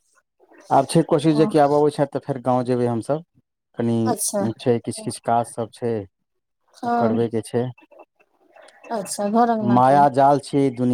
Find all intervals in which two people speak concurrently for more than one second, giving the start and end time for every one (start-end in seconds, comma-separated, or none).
none